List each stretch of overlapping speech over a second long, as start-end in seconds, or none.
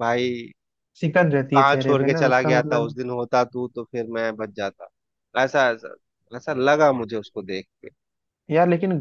1.3-3.0